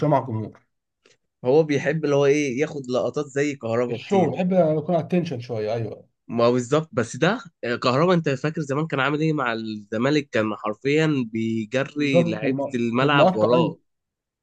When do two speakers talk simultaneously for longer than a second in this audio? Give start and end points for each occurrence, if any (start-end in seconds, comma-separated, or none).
12.0-13.8